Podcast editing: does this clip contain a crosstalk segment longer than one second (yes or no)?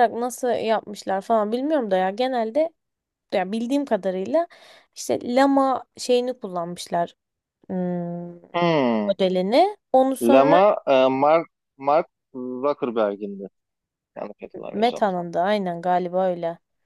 no